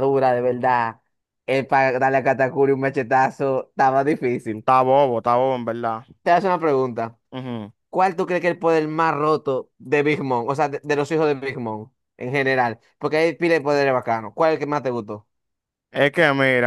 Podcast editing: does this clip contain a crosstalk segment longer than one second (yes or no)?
no